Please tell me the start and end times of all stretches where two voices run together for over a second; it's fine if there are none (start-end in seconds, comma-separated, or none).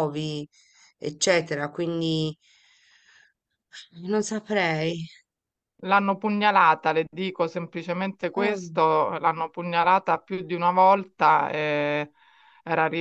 none